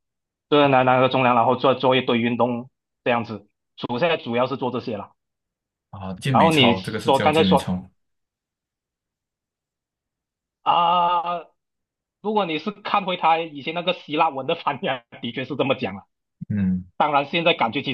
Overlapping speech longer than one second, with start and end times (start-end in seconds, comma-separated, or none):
6.3-7.8